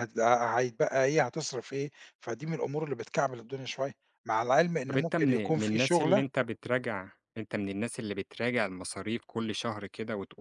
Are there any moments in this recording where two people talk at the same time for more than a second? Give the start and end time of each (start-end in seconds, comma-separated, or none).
4.9-6.2